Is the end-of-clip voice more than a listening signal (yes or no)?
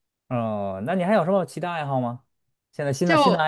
no